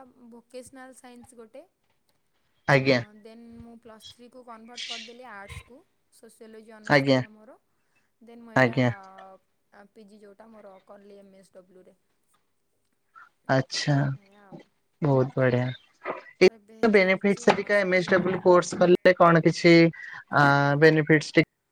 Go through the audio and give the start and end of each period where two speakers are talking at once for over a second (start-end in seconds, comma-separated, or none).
16.6-18.4